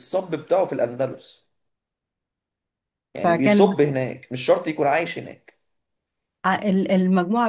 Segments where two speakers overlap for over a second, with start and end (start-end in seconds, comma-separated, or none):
none